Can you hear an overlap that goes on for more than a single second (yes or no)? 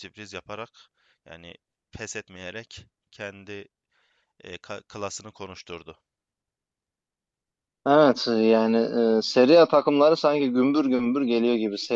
no